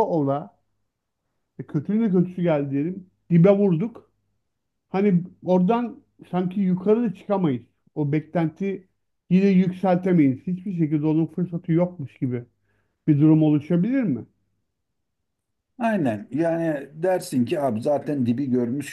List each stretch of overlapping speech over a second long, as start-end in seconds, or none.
none